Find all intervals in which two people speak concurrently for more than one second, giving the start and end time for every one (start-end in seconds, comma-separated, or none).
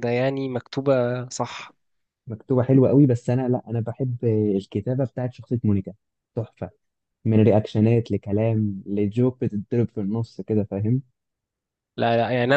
none